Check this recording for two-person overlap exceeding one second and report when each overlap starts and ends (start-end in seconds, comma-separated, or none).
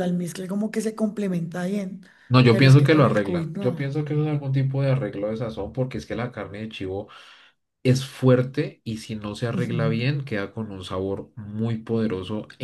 2.5-4.0